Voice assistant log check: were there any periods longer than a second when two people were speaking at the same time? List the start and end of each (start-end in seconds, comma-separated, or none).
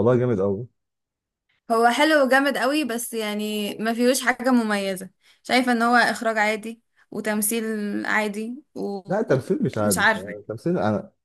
9.1-10.3